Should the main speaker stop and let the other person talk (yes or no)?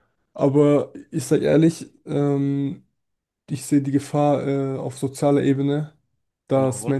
no